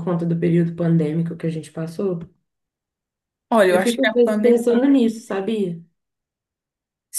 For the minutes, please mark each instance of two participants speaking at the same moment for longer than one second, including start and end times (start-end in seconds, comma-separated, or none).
3.7-4.9